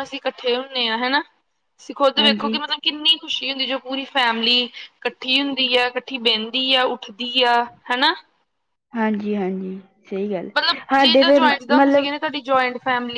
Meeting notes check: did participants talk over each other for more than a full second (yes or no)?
yes